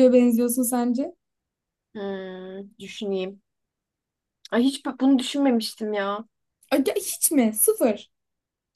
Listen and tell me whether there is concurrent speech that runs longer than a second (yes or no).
no